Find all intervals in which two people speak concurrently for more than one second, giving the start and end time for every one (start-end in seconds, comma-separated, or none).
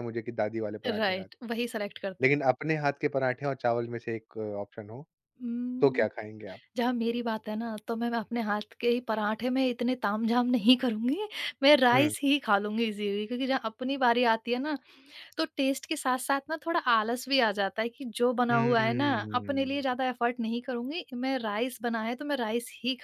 18.5-20.0